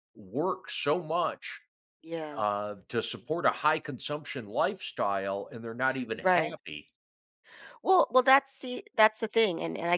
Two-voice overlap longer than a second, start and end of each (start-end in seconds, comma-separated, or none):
none